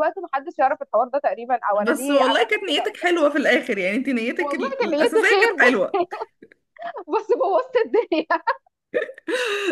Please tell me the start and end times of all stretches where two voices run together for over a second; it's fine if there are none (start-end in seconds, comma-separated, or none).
1.8-3.2, 4.4-6.0